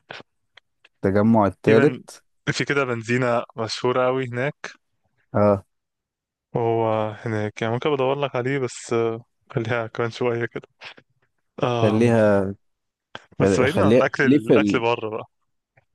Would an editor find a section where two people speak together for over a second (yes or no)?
yes